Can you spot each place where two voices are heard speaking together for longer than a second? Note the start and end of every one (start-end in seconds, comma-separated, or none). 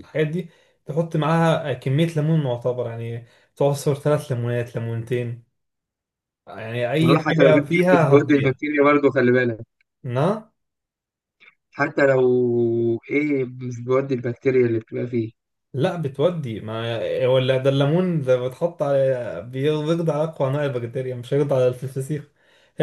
7.0-8.5